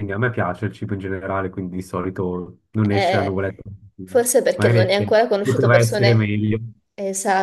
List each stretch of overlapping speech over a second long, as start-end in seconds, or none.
4.5-6.3